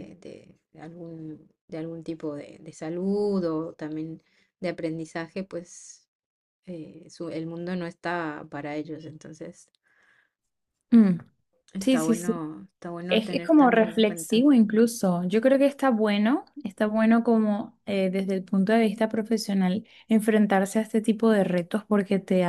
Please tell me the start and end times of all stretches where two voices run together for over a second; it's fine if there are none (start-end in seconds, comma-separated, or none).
13.1-14.4